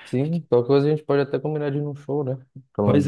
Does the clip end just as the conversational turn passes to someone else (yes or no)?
yes